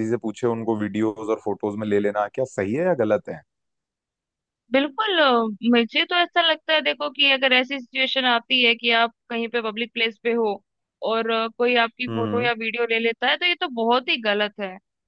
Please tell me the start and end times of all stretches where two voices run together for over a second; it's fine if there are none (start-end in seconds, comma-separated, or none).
none